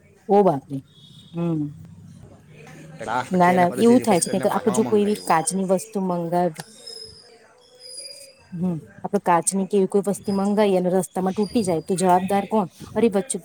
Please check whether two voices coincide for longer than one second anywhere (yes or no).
yes